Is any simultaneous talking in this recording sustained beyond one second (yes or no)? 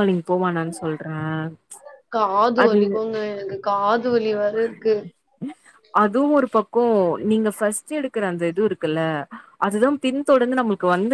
no